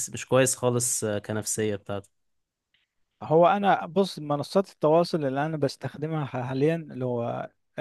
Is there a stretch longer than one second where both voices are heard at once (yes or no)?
no